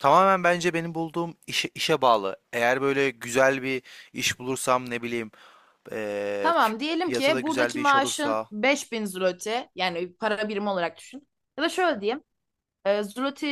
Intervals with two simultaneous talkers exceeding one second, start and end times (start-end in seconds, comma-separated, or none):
6.4-8.5